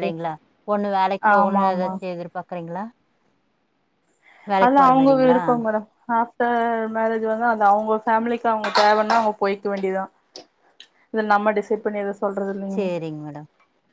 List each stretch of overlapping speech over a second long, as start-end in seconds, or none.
none